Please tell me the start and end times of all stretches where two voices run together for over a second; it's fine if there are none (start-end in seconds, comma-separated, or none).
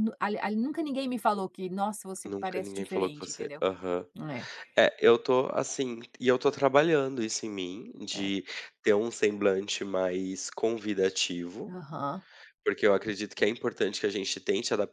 2.2-3.6